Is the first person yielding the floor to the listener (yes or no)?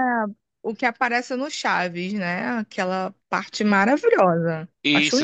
yes